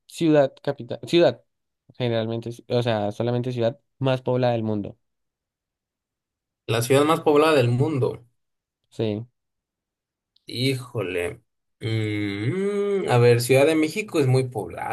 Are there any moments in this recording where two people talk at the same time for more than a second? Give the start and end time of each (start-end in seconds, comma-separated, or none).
none